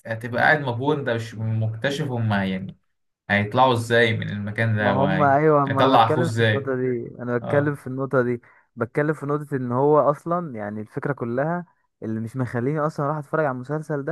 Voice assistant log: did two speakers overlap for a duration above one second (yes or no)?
yes